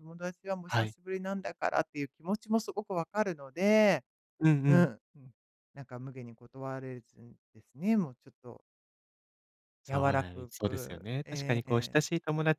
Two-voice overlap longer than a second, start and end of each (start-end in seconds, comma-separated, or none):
9.9-12.0